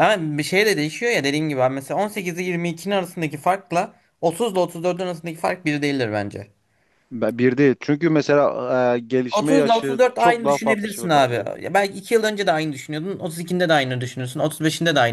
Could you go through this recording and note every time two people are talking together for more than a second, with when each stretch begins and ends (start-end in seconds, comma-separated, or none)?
9.3-11.5